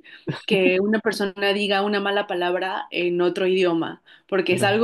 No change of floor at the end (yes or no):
yes